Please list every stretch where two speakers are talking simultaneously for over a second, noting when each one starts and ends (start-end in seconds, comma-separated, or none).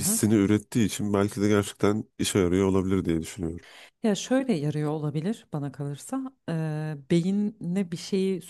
none